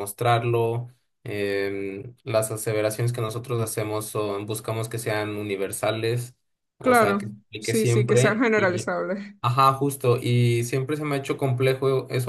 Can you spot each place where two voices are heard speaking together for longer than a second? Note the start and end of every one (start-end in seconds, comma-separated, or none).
6.8-8.9